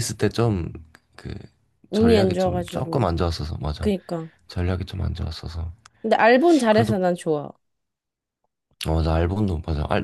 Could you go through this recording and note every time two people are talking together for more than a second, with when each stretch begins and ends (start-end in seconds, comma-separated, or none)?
1.9-3.1